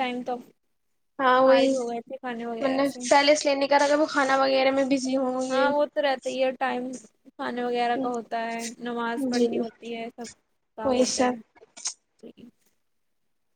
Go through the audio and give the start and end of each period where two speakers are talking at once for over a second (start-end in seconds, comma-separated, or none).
none